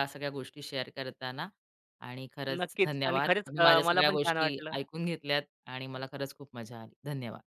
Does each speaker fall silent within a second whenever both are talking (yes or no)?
no